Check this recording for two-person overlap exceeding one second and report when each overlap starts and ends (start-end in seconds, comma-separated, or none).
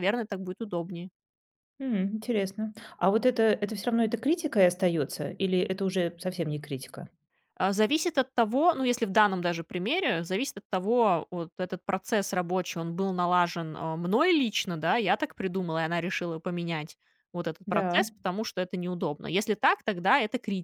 none